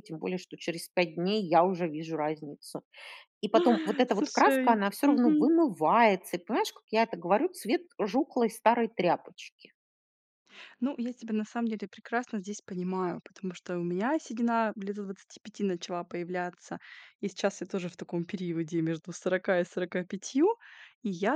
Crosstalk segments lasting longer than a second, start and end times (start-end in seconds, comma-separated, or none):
4.1-5.5